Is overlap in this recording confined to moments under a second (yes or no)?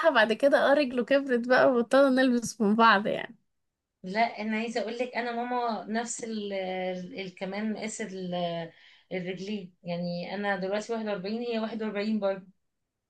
yes